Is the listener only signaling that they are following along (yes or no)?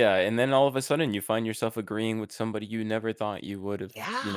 yes